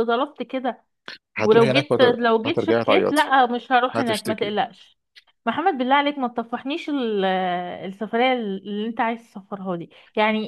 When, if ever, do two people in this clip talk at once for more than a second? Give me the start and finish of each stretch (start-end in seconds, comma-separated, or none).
1.4-3.3